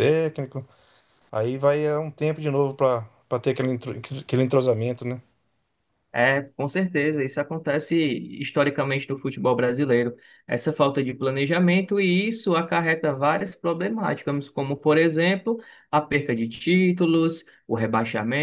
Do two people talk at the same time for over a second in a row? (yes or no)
no